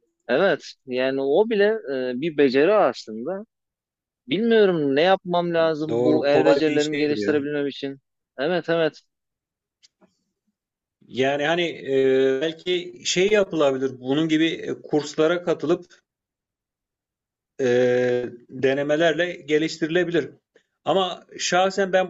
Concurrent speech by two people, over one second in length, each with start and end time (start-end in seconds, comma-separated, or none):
5.9-7.4